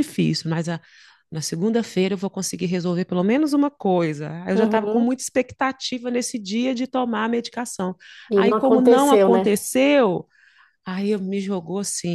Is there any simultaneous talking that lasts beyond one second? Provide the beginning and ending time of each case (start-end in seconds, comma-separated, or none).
8.3-9.6